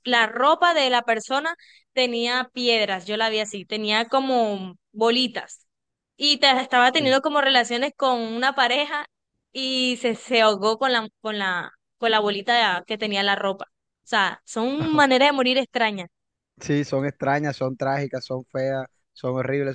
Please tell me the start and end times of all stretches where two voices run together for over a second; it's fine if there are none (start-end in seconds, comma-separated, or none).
none